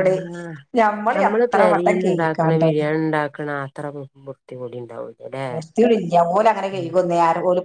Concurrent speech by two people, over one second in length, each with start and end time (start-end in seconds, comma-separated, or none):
1.3-2.8